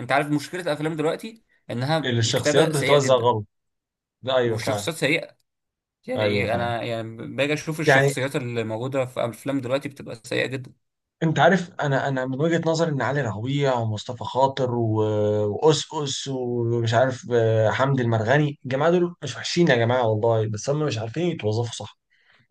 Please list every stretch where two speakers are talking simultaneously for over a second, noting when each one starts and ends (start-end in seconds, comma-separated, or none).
2.0-3.3